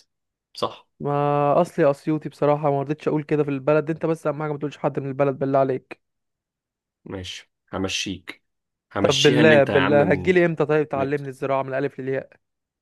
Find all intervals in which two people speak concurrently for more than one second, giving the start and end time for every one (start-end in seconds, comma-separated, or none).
9.0-10.3